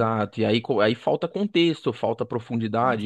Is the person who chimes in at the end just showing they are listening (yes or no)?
yes